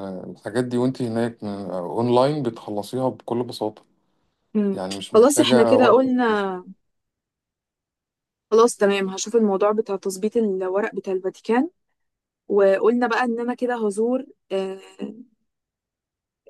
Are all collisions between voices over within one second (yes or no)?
no